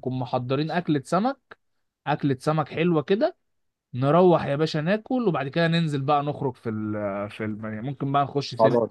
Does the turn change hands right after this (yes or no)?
yes